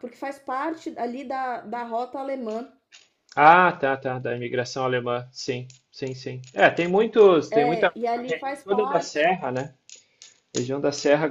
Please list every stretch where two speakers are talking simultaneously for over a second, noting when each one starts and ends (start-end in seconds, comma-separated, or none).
7.5-9.3